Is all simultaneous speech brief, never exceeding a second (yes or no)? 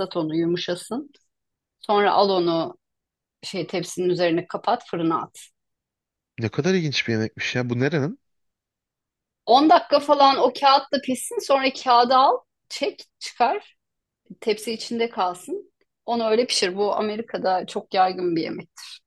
yes